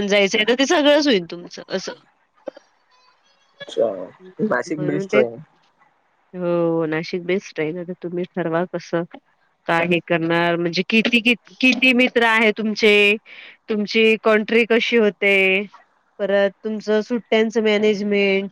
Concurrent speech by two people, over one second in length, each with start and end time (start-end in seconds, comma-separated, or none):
none